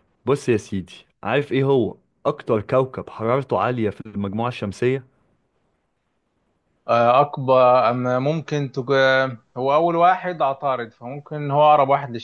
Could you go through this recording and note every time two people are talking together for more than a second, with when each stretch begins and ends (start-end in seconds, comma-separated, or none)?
none